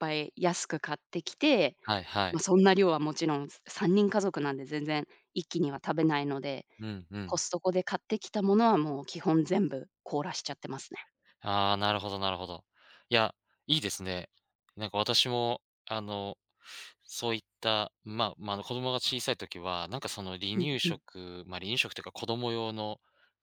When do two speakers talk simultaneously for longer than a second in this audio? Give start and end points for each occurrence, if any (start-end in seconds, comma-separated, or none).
none